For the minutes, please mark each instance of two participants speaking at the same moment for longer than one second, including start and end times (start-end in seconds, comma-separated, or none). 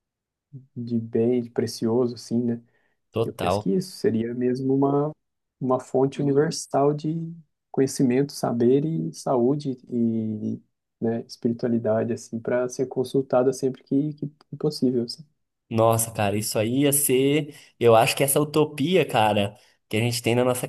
none